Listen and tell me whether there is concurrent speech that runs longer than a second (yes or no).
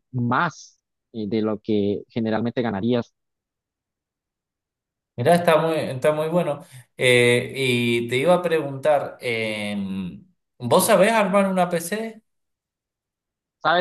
no